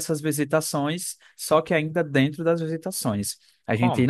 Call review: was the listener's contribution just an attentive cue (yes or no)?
yes